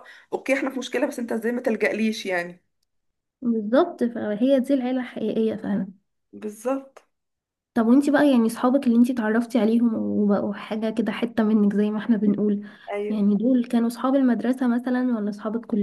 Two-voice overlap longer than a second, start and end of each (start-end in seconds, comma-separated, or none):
none